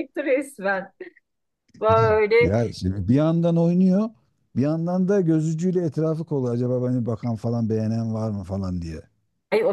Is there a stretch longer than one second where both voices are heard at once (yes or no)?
no